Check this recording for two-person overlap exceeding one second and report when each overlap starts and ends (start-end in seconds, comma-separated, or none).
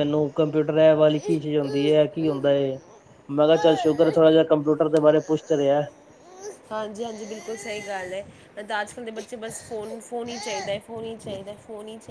none